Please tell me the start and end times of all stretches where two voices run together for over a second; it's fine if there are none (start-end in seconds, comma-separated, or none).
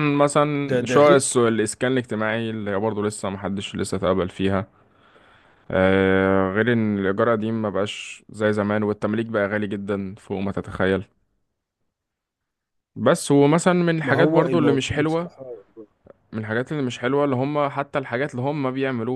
14.0-15.3